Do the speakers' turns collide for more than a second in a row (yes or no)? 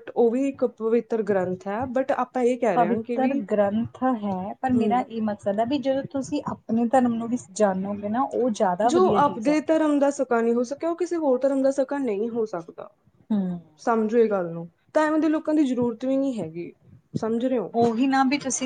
no